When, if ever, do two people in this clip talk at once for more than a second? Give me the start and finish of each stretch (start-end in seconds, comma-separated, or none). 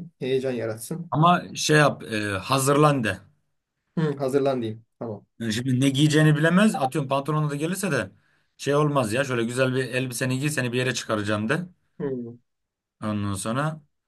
none